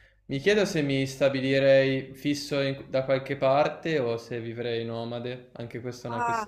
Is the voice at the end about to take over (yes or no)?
yes